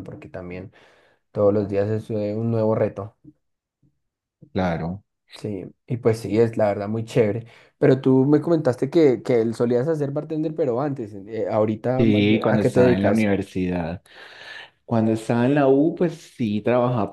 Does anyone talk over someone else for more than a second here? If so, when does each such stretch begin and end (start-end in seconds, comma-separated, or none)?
12.0-13.3